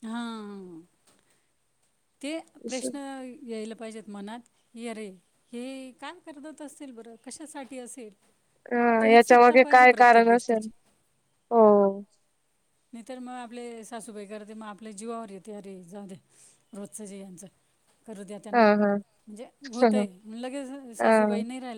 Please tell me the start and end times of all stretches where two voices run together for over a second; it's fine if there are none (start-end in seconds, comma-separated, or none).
8.7-10.7